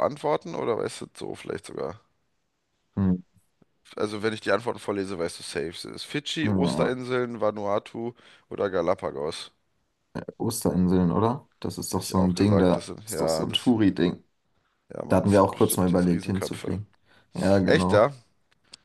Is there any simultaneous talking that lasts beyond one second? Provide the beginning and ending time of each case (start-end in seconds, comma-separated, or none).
11.9-13.8, 15.1-16.8